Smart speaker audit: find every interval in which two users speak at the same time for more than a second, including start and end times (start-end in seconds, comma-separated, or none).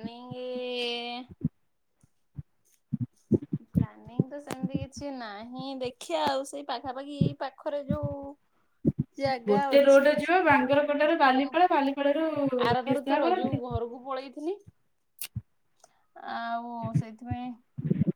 9.5-11.6